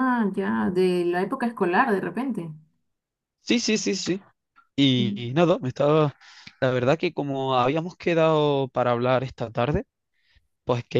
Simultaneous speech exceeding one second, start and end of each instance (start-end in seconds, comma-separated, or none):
none